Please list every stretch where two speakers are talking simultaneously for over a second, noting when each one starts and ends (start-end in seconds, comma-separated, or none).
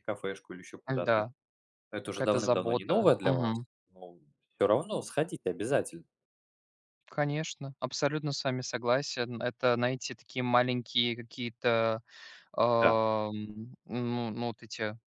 2.1-3.5